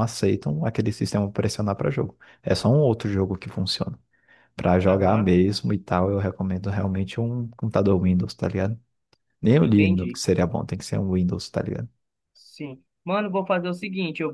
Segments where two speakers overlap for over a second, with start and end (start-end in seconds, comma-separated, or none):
none